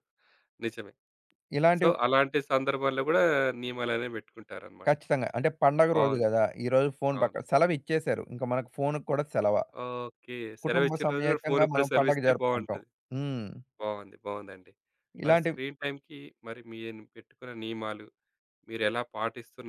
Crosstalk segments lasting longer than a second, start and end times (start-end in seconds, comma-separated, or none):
10.6-12.8